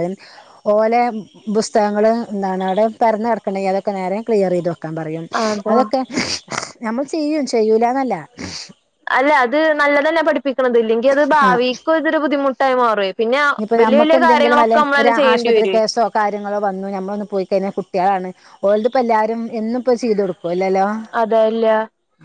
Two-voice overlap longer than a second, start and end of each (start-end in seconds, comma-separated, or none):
13.8-15.8